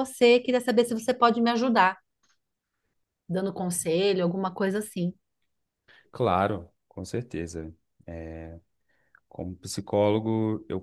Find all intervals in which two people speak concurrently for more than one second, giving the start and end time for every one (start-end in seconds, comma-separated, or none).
none